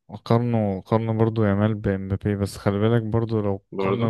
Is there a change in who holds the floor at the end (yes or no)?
no